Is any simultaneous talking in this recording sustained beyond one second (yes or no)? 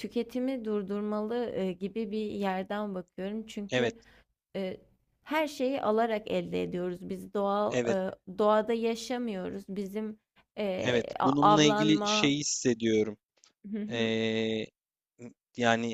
yes